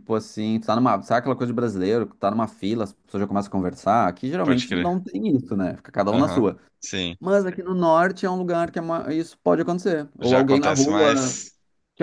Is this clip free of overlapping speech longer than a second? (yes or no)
no